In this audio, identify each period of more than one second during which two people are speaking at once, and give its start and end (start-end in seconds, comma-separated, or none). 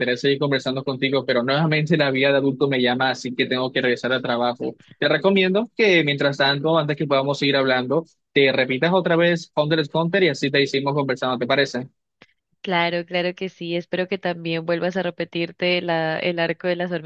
none